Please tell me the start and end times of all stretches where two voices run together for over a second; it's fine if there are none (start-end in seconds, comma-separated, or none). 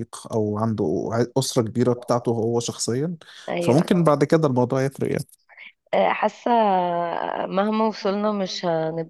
none